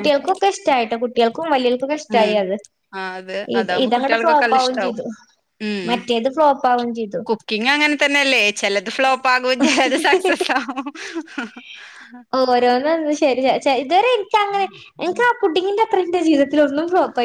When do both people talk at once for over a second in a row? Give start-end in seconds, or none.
3.6-5.0